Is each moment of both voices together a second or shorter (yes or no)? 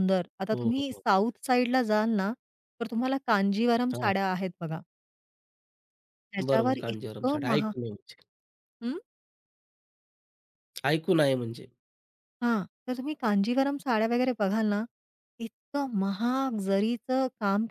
no